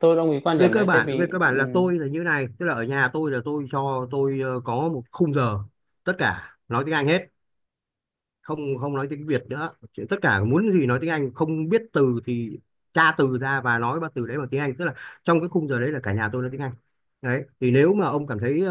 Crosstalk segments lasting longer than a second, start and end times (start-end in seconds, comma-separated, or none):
0.6-1.9